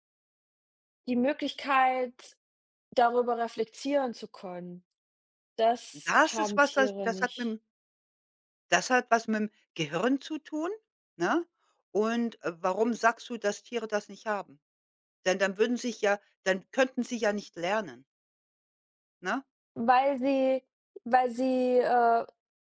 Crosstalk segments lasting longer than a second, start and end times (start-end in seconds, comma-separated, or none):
5.9-7.6